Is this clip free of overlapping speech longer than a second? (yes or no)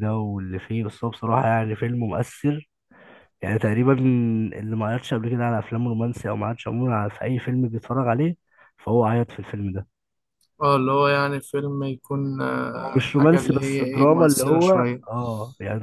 no